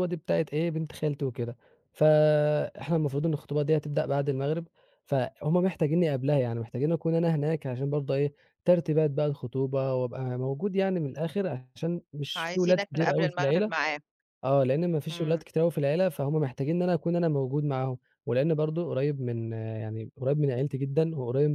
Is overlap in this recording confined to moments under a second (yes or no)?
no